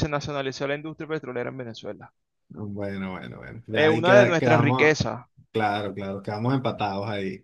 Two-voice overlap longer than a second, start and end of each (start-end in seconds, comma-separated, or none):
3.7-5.0